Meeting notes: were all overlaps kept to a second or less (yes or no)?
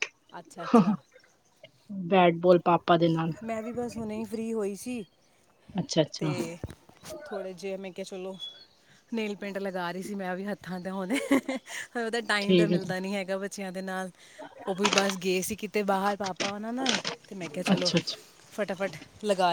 yes